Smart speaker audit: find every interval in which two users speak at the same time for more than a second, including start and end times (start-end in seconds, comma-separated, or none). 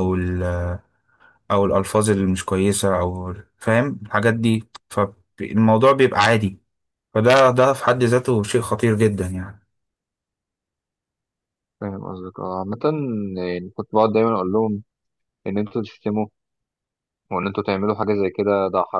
none